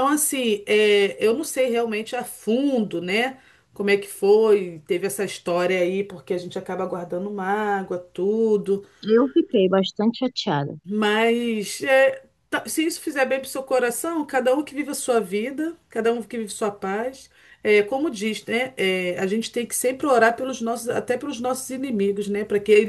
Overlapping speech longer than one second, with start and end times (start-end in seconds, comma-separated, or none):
none